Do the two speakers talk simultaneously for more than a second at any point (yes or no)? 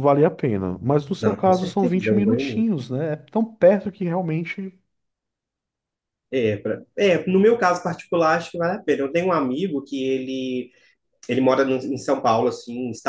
yes